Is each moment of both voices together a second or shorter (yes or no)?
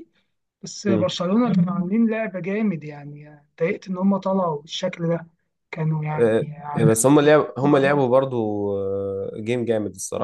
no